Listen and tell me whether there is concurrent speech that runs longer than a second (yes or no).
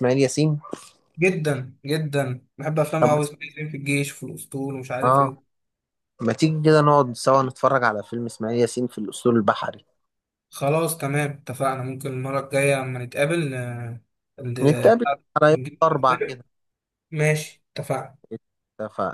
yes